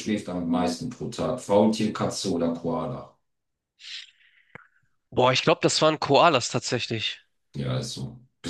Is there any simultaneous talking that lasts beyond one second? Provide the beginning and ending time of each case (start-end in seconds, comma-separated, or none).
none